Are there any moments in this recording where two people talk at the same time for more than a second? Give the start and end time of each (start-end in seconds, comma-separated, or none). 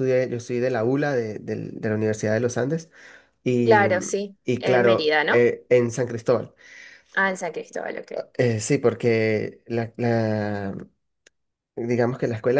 3.6-5.4